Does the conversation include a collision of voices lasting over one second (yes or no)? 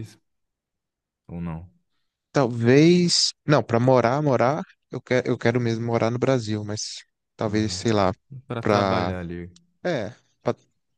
no